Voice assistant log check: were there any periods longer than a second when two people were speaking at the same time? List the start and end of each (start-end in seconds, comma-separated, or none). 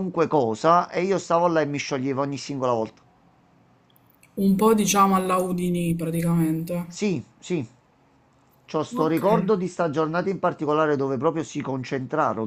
none